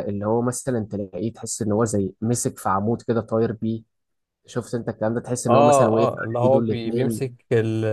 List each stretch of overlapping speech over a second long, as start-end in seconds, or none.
5.5-7.3